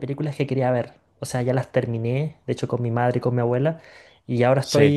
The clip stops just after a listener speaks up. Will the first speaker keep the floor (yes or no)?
yes